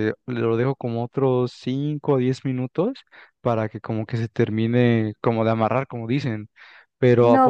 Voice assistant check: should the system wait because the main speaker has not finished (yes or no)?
no